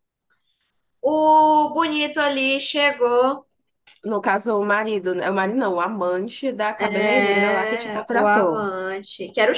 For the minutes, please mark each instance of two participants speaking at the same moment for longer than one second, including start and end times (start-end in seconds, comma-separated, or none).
6.8-8.6